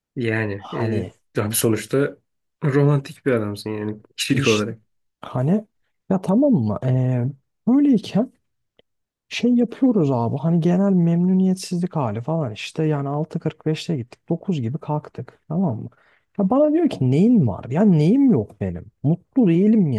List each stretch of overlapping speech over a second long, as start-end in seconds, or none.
none